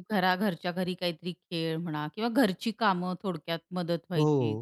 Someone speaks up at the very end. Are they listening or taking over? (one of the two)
taking over